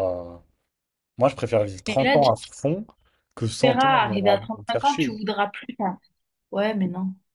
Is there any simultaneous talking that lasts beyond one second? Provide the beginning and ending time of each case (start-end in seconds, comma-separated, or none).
3.4-5.2